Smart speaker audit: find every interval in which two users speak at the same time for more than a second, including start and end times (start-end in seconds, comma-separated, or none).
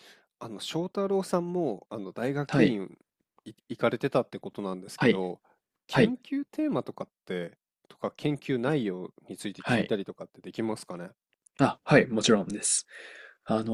none